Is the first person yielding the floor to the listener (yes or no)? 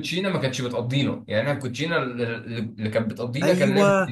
yes